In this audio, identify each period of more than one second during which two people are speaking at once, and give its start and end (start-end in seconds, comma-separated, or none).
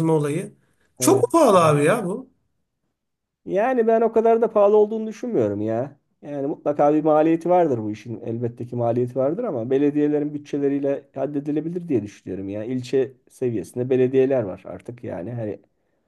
none